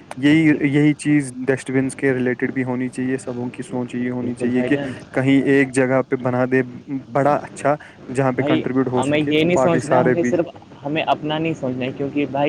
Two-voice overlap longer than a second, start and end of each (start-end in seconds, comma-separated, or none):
8.3-10.3